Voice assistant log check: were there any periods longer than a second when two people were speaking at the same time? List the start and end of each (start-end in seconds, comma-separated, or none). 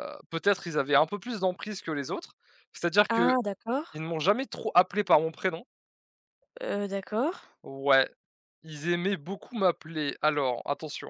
none